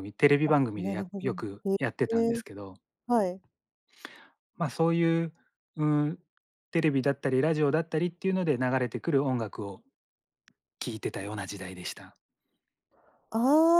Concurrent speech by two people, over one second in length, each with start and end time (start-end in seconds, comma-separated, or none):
0.8-2.4